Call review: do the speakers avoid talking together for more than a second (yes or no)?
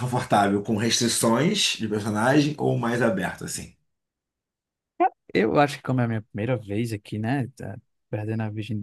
yes